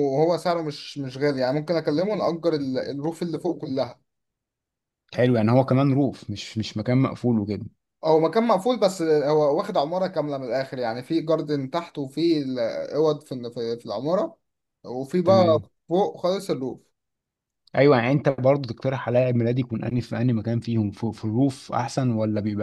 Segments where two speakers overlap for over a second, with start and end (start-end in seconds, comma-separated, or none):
none